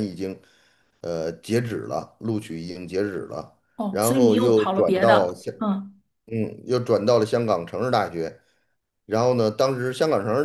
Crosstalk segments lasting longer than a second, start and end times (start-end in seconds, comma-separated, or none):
3.8-5.5